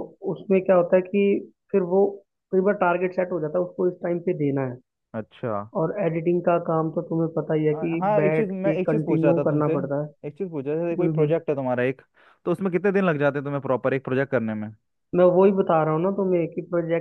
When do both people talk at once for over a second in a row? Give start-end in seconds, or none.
7.7-9.7